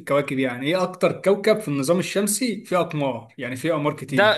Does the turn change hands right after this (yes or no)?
yes